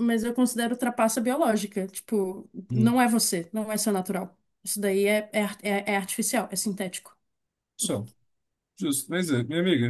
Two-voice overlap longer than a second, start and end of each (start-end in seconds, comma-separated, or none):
none